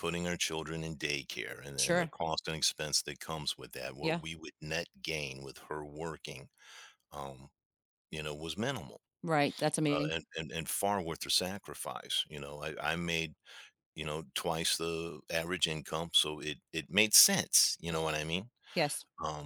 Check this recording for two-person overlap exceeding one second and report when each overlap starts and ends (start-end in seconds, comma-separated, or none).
none